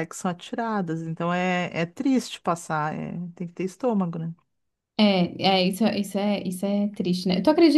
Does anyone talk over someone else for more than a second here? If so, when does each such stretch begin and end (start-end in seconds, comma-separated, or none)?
none